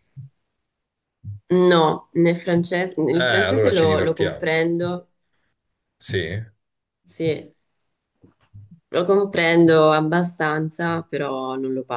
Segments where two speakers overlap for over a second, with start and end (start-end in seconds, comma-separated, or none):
3.1-4.5